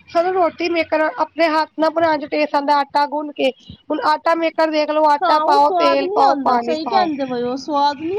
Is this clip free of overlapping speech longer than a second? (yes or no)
no